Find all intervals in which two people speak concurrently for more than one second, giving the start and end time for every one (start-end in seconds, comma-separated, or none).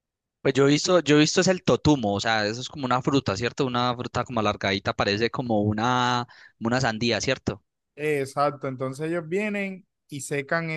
none